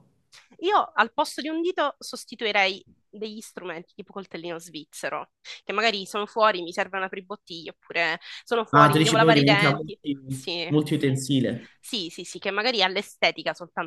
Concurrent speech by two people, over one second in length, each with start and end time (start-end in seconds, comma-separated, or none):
8.7-10.7